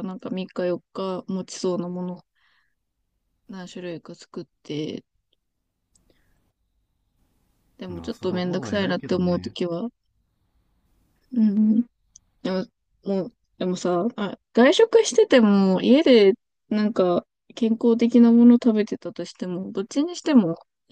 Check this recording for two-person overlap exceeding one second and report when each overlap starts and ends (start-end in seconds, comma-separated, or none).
7.9-9.5